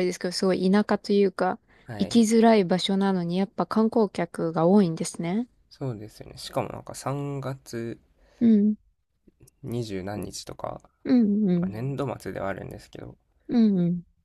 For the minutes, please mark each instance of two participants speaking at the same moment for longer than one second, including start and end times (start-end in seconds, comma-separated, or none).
none